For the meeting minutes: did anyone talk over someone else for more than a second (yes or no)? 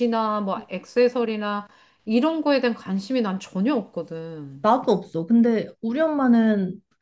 no